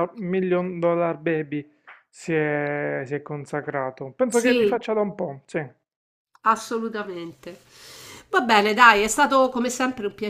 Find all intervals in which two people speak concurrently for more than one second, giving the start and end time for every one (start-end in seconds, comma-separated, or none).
none